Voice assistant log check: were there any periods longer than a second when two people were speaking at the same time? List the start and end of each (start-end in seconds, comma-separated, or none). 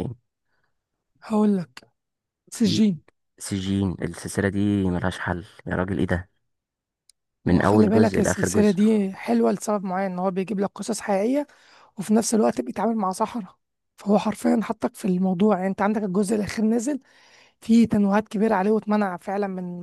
7.5-8.8